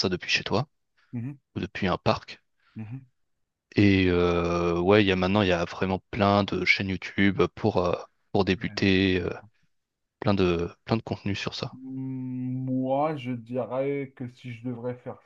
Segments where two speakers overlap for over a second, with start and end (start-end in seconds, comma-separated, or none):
none